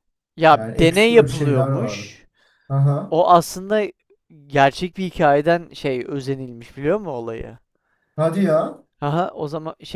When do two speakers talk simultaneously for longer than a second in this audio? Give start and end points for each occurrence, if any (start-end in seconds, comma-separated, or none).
0.5-2.1